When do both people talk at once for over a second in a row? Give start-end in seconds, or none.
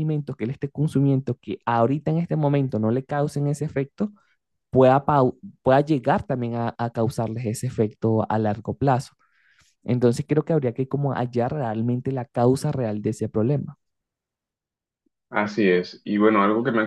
none